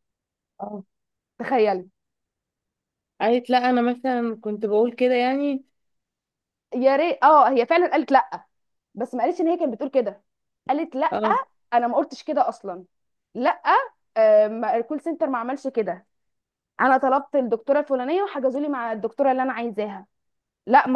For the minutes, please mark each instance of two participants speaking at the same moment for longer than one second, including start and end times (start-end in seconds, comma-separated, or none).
none